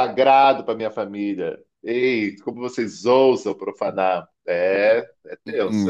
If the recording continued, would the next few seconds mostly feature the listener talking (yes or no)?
yes